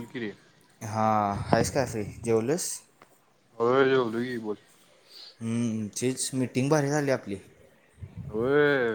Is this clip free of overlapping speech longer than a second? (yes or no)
yes